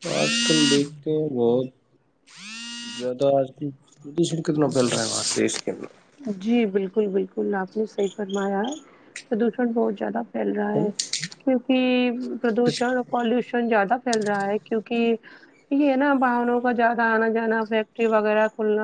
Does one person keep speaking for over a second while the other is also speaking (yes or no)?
no